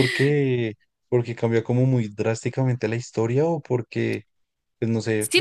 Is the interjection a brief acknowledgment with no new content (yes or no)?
no